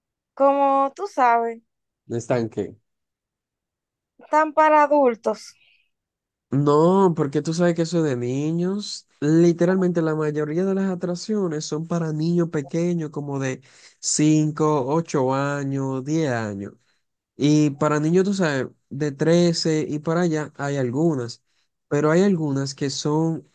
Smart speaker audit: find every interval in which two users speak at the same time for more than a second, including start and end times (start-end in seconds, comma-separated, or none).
none